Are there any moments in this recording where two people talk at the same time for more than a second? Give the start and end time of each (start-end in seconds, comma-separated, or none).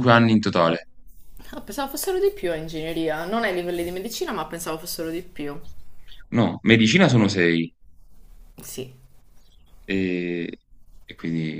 none